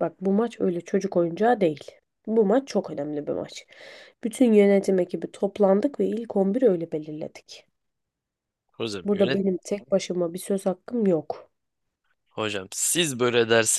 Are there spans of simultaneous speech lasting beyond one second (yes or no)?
no